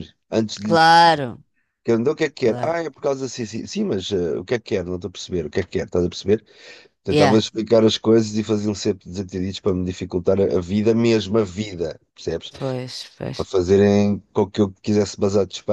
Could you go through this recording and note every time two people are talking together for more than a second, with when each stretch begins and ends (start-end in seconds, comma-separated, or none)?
none